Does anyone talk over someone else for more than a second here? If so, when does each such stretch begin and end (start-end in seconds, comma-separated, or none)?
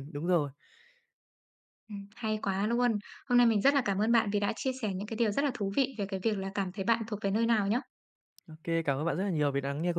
none